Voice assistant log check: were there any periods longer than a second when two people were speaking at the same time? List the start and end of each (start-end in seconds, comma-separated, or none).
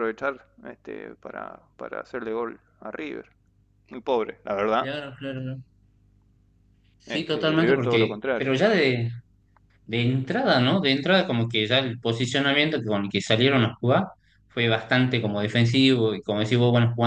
7.1-8.5